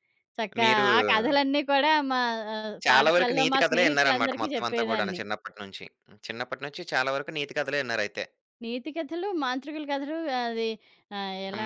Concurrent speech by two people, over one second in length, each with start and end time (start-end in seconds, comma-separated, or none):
2.9-5.2